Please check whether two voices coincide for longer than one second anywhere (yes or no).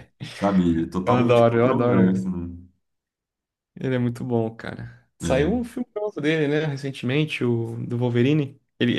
yes